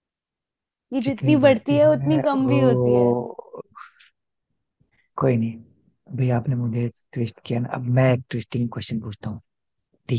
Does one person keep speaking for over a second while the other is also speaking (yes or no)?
yes